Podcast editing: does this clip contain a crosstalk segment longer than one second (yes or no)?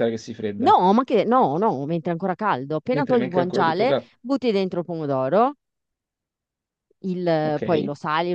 yes